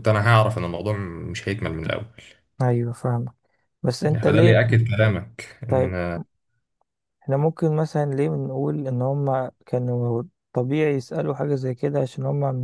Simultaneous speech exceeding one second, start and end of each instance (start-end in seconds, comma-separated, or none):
none